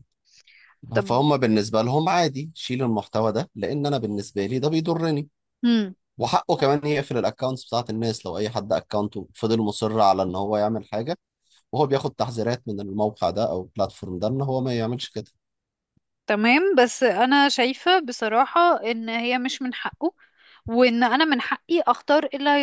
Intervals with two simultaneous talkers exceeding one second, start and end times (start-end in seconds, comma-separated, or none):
none